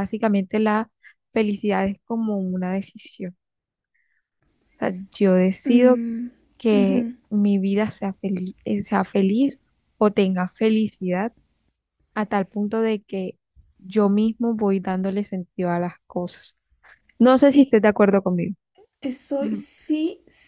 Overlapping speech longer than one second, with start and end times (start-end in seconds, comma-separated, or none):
none